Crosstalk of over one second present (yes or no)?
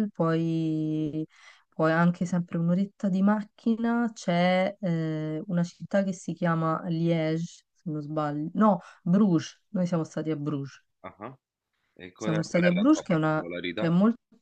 yes